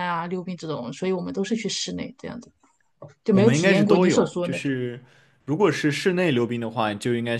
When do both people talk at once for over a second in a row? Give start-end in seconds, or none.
3.3-4.8